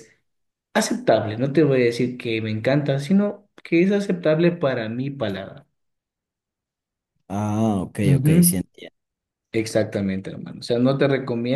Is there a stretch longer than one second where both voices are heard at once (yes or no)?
no